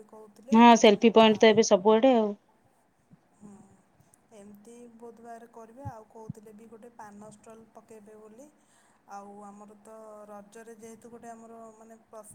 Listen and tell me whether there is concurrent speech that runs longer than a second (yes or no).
no